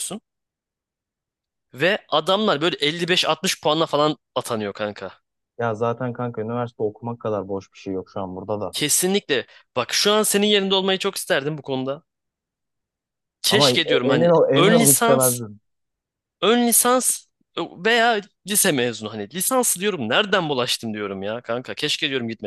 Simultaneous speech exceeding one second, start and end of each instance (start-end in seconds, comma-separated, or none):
13.5-15.4